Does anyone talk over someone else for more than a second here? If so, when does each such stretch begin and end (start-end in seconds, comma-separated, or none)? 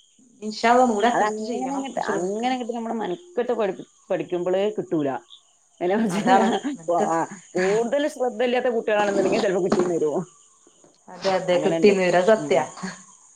1.1-2.6